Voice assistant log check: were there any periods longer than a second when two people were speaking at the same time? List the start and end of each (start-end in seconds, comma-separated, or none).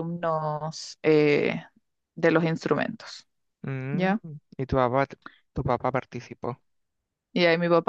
none